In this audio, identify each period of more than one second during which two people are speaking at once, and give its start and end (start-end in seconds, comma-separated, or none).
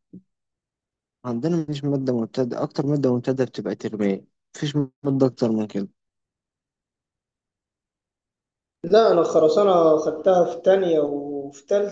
none